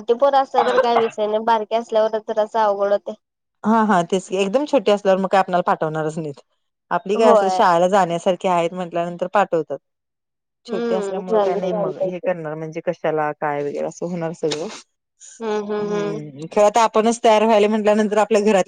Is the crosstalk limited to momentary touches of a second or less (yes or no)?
no